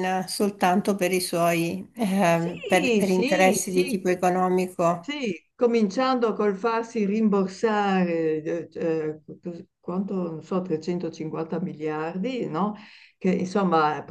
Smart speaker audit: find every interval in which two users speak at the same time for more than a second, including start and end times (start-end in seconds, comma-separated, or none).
2.2-4.0